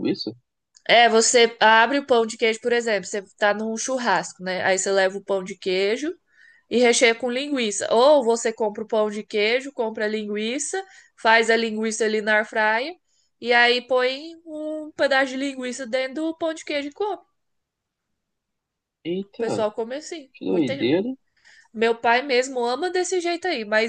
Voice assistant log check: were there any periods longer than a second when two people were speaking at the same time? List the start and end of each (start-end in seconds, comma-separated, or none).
none